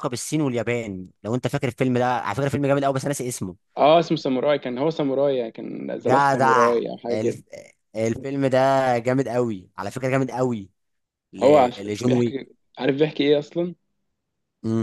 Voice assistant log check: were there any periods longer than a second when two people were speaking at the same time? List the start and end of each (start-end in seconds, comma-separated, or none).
6.0-7.4